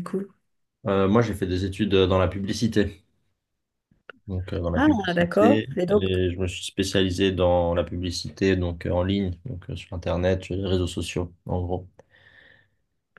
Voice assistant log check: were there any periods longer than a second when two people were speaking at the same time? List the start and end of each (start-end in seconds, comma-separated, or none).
4.7-6.1